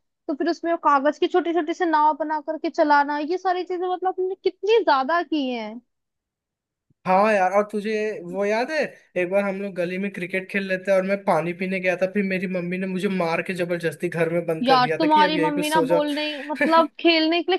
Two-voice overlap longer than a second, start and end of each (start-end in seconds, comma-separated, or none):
14.6-16.0